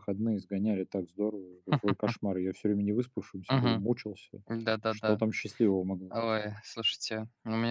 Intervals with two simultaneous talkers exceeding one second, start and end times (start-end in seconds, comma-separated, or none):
none